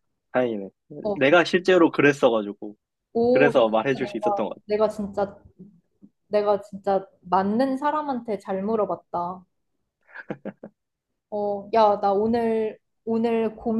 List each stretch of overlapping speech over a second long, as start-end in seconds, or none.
3.3-4.6